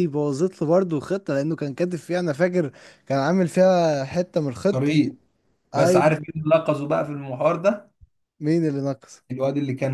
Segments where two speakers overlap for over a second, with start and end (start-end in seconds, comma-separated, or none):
none